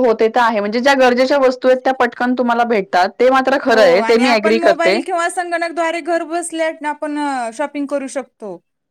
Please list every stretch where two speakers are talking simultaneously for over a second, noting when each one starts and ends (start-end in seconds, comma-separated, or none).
none